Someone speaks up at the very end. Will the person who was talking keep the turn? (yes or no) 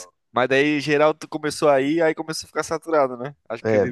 no